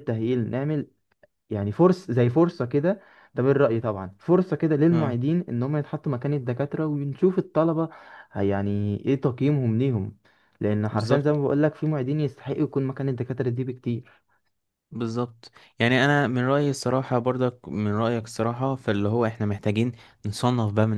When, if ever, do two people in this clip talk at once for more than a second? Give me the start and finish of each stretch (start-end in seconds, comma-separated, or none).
none